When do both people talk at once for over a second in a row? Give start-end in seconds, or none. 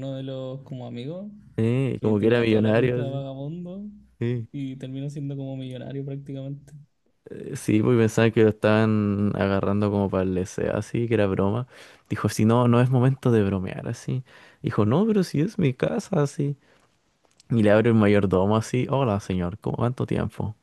2.0-3.2